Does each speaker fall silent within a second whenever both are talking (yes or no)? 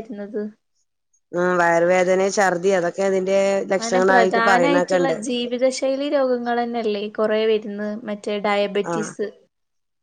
no